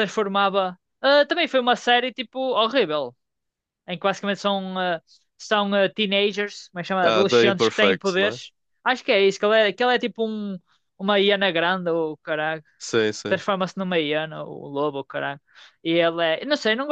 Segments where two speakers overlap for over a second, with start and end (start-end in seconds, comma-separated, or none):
7.0-8.4